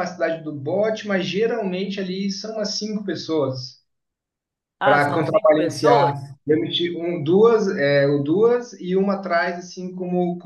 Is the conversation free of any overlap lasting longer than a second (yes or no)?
no